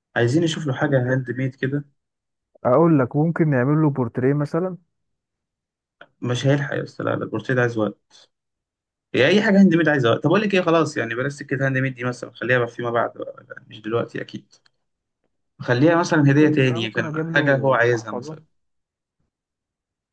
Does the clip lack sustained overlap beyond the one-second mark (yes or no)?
no